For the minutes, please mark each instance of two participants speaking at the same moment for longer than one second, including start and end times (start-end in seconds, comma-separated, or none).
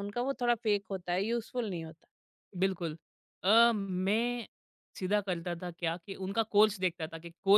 none